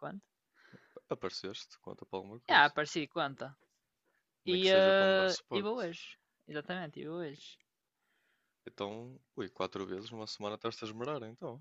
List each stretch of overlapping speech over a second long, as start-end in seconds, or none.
4.5-5.8